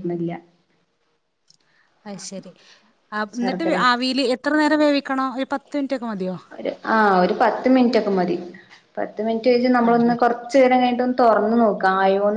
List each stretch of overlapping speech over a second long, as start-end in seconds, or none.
none